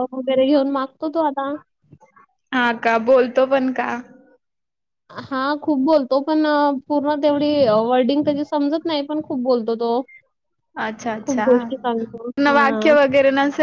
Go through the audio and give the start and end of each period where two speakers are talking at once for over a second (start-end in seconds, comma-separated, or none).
11.2-12.9